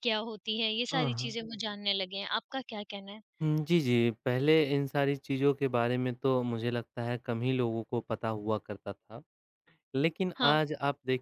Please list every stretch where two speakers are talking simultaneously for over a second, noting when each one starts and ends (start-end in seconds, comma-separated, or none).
none